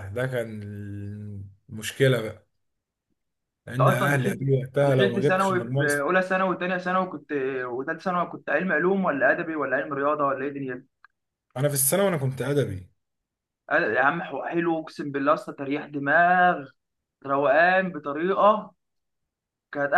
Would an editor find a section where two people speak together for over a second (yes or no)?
yes